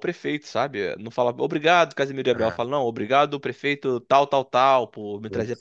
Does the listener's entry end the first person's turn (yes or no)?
no